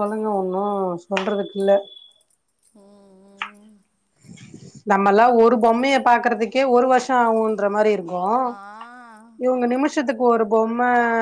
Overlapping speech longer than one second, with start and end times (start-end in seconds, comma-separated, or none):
none